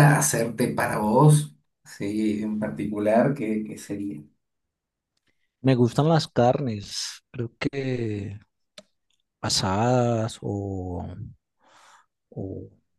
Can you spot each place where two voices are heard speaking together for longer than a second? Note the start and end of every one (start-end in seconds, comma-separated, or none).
none